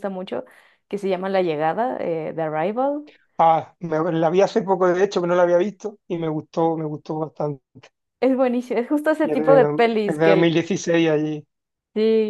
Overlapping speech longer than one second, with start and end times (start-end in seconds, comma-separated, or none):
9.2-10.7